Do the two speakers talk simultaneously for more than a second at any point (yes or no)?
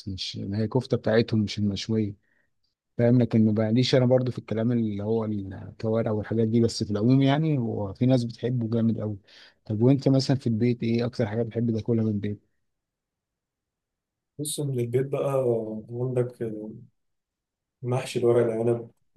no